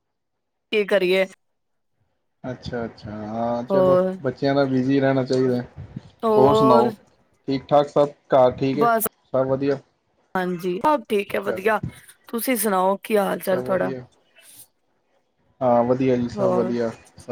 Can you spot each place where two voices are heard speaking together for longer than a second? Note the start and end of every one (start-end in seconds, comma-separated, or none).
none